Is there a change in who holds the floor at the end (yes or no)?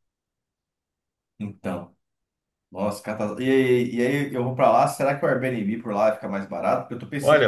yes